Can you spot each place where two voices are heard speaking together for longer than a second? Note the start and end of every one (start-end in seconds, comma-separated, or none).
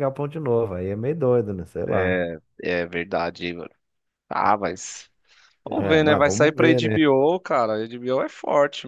5.7-7.0